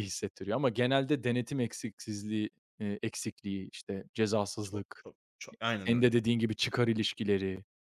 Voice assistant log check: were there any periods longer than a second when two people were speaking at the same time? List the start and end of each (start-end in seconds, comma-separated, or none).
none